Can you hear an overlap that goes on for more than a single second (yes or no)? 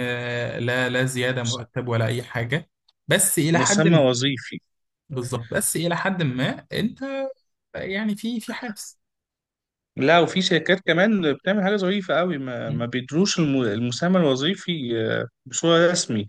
no